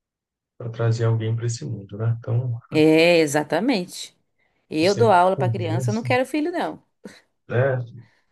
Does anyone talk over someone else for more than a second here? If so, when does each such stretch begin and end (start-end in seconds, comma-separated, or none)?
4.8-6.1